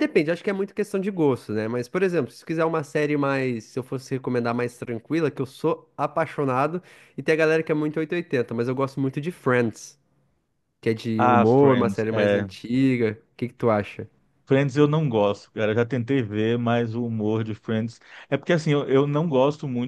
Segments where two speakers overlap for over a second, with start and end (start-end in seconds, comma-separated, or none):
11.2-12.5